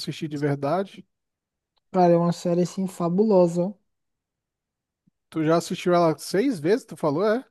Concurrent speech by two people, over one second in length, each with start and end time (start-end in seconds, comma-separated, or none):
none